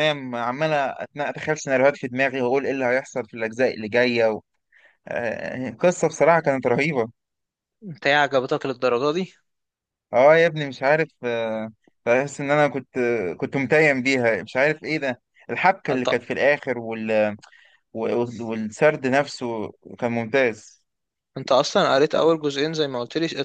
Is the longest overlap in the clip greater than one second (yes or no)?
no